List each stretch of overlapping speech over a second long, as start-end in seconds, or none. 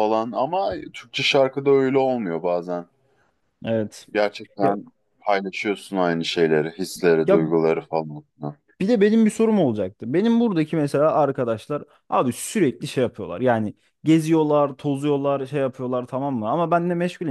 none